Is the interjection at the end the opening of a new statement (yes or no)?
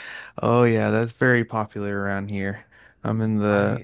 no